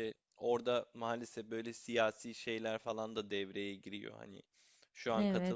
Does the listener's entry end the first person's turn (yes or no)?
no